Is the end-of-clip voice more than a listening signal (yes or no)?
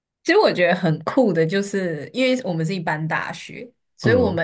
no